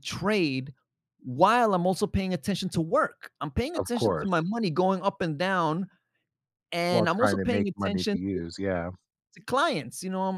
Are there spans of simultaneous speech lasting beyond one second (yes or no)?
yes